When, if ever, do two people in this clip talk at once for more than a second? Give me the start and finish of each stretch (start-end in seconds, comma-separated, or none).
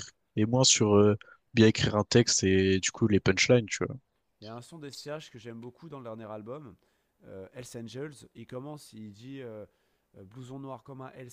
none